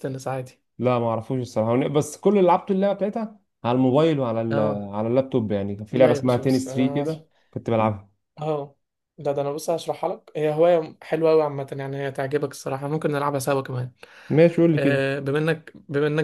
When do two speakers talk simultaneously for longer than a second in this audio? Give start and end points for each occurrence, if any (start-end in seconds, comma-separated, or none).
5.9-7.2